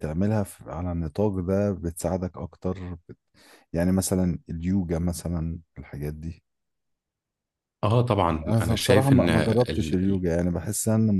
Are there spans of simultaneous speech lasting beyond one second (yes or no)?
yes